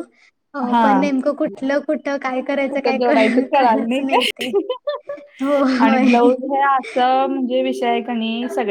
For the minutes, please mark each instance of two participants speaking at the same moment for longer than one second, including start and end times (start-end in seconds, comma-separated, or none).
2.7-4.4